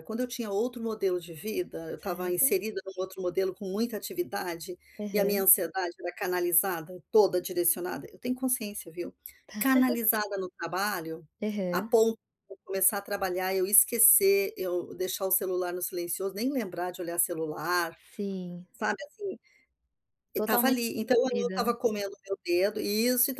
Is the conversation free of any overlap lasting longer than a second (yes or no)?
no